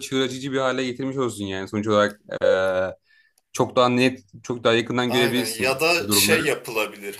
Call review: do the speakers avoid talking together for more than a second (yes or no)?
no